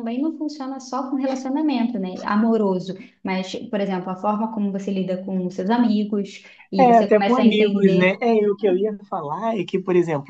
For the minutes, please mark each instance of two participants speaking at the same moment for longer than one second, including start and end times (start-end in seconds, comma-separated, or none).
6.8-8.2